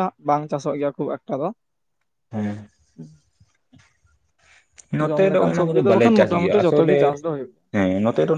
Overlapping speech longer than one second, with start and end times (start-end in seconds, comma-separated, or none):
5.1-7.0